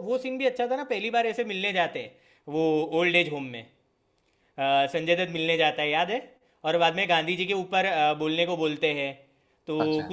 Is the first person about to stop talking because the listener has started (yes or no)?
no